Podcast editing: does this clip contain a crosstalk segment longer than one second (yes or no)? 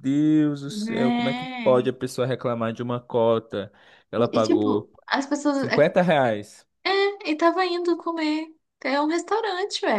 yes